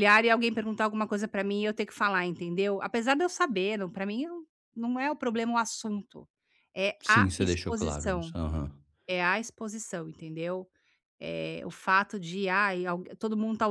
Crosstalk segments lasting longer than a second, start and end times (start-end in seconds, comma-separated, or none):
7.0-8.3